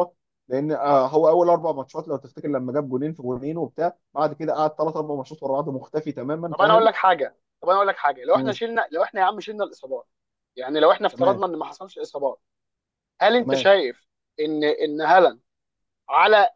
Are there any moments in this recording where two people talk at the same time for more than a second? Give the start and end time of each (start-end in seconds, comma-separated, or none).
none